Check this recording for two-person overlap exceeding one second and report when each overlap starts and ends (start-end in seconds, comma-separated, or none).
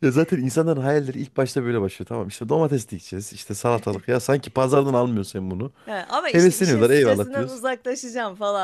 6.3-7.6